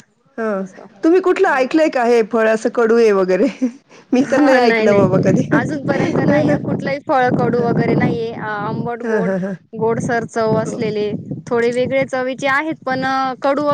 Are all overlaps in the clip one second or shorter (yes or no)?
no